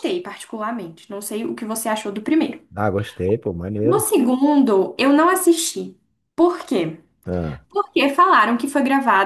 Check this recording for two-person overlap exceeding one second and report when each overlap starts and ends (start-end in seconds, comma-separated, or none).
none